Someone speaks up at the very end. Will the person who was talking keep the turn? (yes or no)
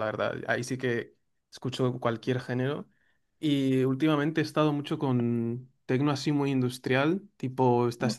yes